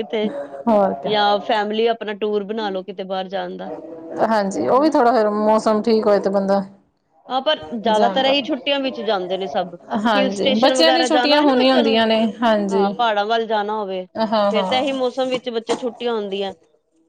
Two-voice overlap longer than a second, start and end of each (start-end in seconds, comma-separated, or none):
10.2-12.0